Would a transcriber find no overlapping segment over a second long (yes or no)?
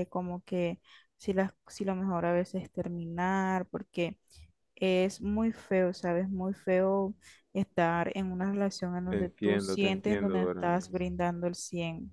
no